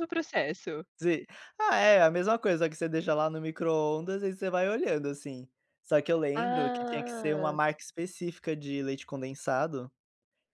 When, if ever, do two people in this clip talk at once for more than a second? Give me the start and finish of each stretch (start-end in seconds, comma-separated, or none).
6.3-7.6